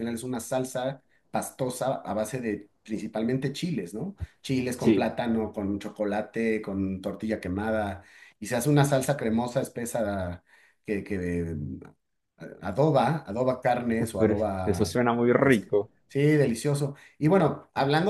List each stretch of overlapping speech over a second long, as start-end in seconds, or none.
none